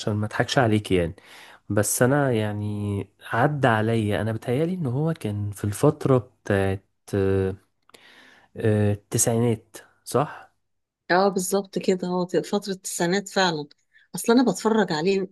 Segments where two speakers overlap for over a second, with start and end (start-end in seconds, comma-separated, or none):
none